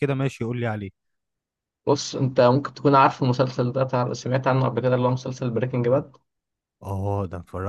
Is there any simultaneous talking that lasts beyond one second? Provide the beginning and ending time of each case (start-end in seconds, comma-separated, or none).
none